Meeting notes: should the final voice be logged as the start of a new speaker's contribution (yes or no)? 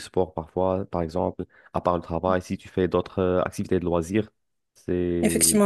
yes